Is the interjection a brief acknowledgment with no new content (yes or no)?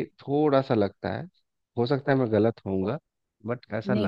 no